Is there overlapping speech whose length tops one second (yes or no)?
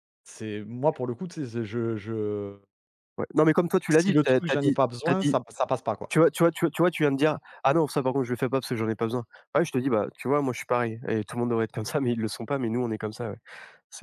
yes